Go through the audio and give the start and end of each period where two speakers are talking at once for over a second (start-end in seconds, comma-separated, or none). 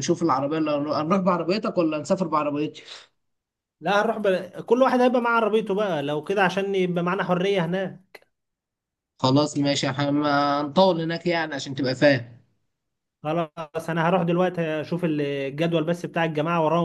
none